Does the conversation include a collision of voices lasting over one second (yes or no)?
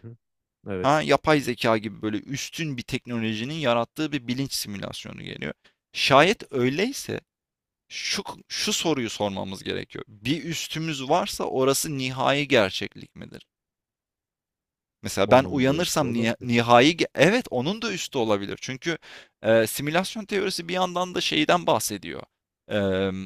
yes